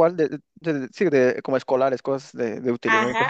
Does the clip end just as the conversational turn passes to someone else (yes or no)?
yes